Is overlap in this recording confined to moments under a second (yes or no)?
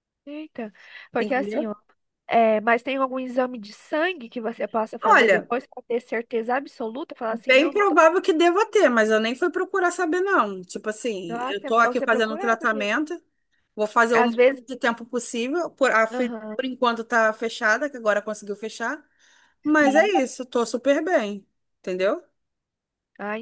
no